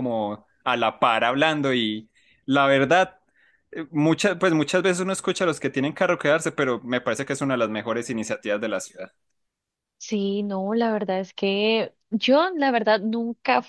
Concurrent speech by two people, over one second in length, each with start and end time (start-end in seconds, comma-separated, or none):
none